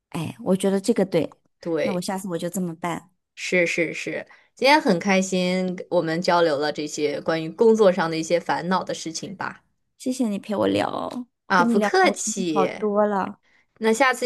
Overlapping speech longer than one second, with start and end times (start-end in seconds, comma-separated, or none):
11.5-12.8